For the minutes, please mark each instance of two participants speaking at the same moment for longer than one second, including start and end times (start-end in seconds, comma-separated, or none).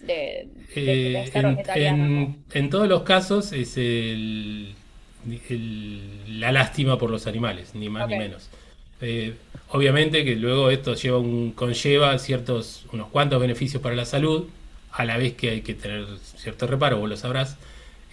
0.8-2.0